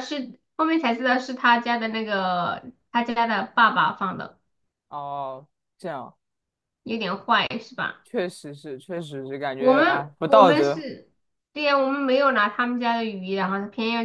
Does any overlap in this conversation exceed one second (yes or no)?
yes